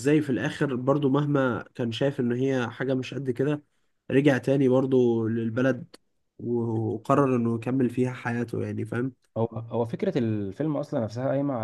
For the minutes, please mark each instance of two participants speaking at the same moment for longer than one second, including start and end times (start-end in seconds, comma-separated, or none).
none